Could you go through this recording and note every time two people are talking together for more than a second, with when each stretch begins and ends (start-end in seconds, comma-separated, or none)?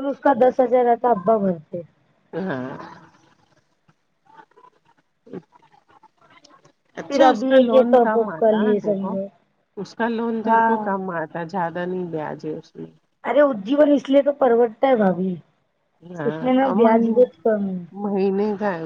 7.1-9.1